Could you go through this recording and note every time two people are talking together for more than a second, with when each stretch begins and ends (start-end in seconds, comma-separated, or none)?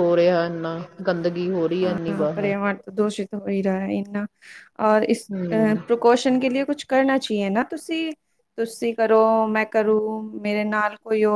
none